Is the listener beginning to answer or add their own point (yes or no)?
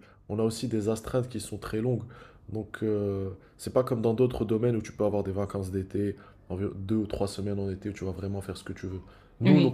no